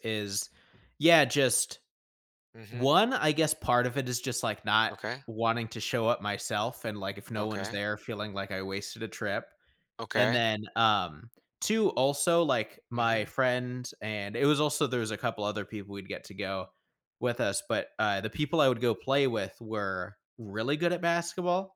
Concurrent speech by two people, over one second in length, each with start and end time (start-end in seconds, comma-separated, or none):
none